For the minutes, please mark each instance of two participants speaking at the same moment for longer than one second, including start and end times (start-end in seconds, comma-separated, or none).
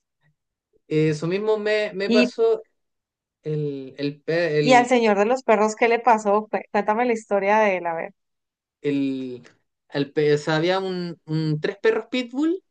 none